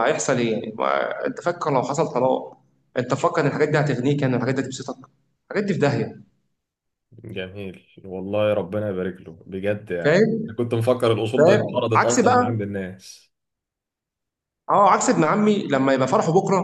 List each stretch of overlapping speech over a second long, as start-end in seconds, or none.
11.4-12.6